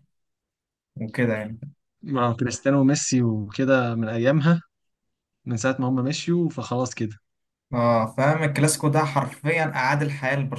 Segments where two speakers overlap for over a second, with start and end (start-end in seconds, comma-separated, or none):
none